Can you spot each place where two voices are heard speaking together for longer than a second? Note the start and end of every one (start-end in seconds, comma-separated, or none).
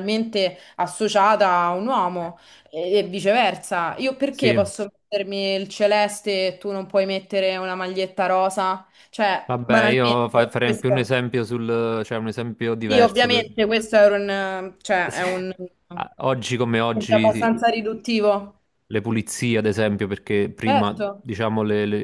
9.4-11.2